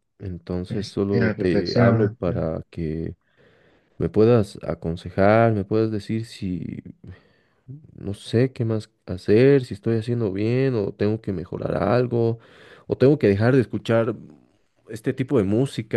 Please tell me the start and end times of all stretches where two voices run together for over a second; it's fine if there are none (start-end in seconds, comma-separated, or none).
0.7-2.5